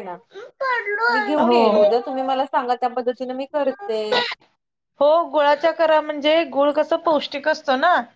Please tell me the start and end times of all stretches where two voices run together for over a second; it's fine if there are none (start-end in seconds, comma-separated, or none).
none